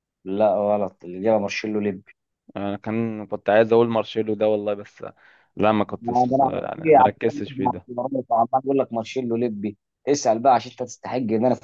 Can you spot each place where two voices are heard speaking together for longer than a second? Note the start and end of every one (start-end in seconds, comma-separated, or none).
6.0-7.9